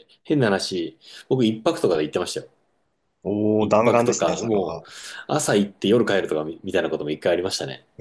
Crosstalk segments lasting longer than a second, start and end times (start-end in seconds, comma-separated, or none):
3.6-4.8